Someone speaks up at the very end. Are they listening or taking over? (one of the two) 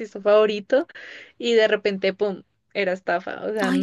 taking over